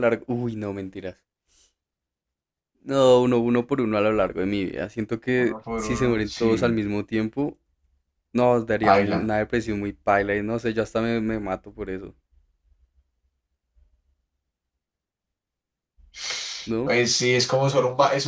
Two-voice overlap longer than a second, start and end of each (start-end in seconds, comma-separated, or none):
5.3-6.8